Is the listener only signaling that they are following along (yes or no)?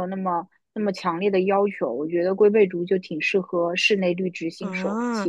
no